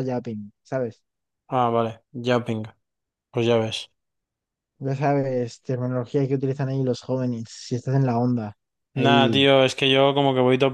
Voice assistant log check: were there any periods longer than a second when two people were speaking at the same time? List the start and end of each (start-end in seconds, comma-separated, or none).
none